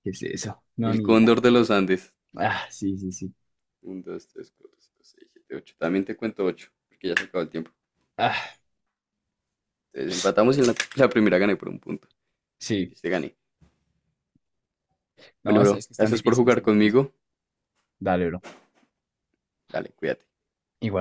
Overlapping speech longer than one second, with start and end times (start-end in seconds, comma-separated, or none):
15.5-17.0